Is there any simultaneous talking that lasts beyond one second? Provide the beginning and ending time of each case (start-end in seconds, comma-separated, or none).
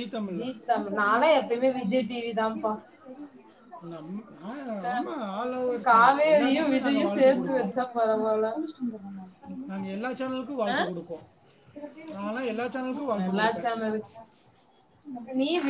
5.9-7.3